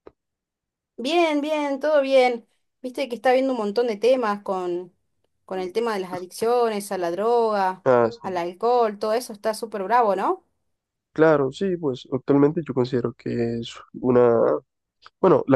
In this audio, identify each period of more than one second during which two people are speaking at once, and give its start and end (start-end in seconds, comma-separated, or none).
none